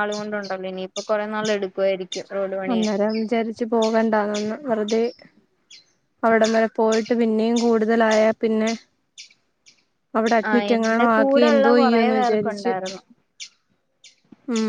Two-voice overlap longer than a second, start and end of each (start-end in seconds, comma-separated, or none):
10.5-12.7